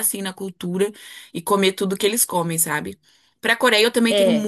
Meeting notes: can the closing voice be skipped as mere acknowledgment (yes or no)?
yes